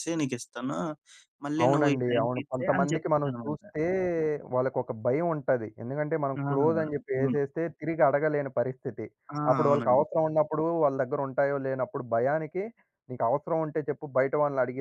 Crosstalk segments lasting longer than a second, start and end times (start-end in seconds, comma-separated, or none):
1.6-3.6